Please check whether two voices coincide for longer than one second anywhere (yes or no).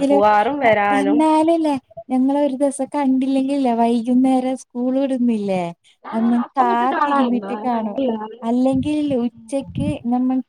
yes